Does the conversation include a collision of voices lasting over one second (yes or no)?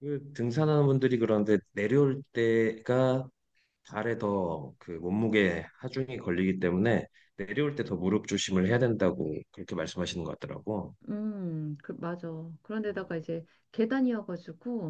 no